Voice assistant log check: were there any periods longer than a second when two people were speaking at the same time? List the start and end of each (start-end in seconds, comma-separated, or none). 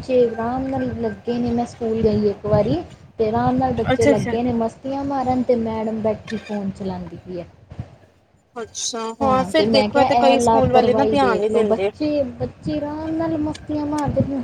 9.5-11.9